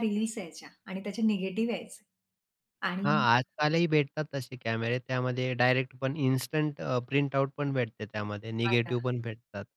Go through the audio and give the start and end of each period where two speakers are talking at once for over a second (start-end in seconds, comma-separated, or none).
none